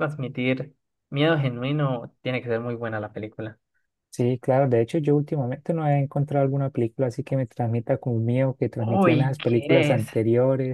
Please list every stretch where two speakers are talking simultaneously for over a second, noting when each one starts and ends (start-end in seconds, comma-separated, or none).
8.8-10.0